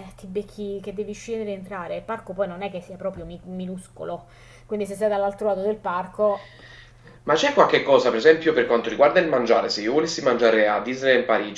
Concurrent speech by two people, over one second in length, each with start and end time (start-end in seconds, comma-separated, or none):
none